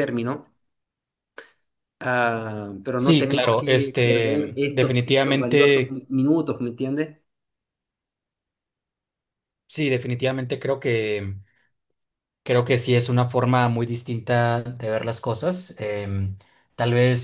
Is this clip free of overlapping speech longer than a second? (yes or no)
no